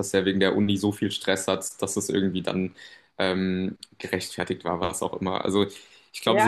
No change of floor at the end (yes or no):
no